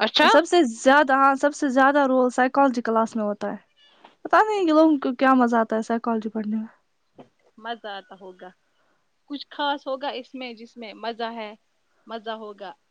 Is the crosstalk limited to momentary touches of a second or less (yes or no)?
yes